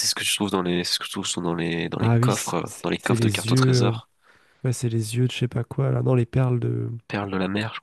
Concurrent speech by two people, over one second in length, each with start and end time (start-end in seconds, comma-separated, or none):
2.0-4.0